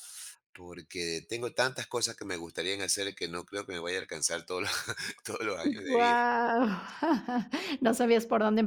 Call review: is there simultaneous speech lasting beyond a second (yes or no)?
no